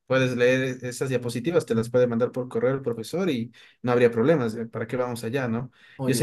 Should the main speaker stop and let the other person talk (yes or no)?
no